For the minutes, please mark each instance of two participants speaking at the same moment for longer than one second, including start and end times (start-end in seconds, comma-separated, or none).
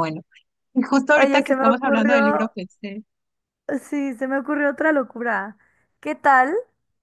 1.2-2.5